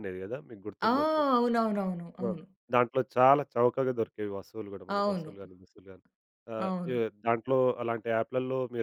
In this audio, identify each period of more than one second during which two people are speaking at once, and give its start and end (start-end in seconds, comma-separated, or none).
none